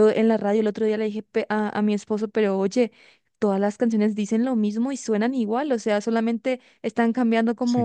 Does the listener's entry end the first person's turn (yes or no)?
no